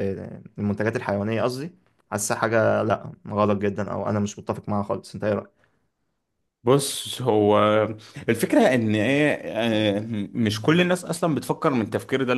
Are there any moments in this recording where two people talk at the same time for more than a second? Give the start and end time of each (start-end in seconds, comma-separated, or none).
none